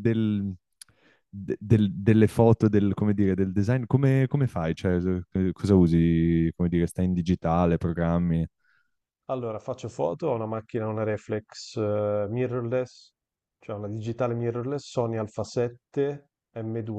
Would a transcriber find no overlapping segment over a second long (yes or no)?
yes